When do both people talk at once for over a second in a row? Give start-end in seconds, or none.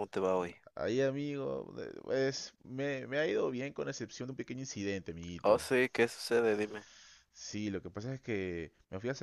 none